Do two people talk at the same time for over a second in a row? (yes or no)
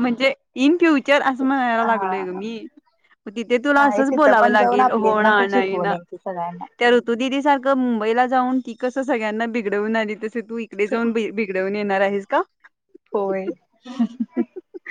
yes